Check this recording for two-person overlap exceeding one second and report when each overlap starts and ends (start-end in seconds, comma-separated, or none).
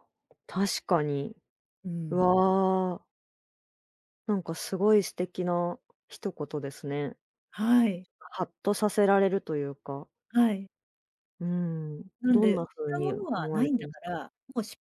12.2-14.2